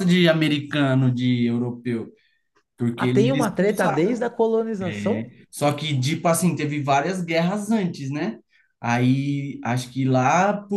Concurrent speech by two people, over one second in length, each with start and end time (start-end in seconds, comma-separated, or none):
3.0-4.2